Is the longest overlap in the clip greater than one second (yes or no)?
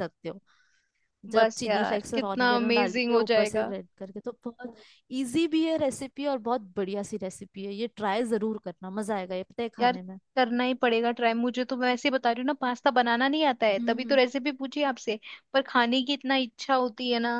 yes